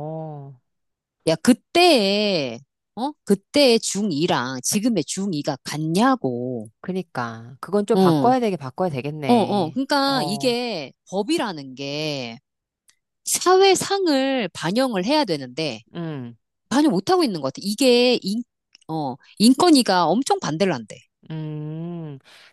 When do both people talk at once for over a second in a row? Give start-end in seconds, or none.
9.2-10.6